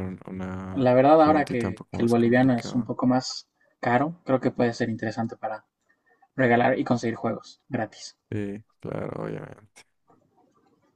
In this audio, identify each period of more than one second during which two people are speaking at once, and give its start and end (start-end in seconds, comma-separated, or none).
0.7-2.9